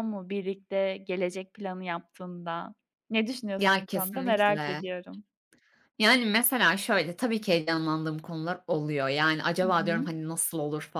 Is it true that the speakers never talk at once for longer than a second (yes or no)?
no